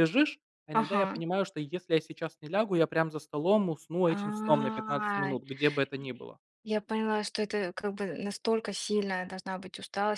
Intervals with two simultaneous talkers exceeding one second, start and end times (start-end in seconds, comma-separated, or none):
4.1-5.4